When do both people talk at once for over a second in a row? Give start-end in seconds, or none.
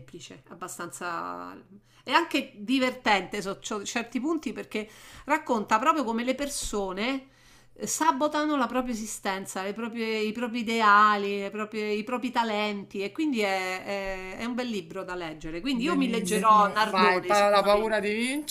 15.7-18.0